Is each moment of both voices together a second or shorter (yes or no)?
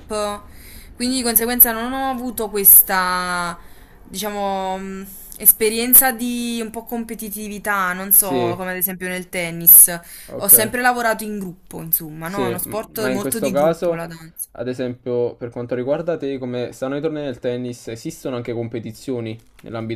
no